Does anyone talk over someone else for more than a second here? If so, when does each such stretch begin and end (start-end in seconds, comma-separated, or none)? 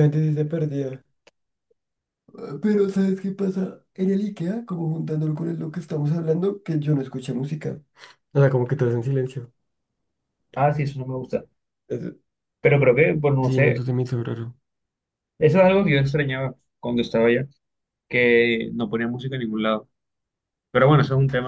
none